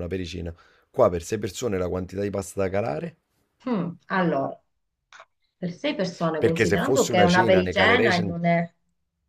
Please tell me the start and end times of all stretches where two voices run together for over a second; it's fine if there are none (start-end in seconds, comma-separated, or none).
6.4-8.3